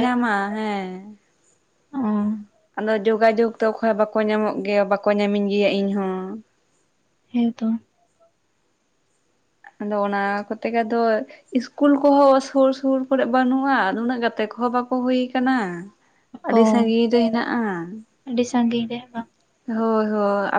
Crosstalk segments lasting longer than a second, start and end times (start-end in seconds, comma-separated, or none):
none